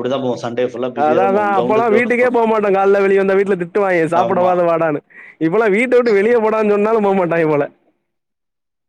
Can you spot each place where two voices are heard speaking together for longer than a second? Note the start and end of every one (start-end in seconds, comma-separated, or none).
1.0-2.5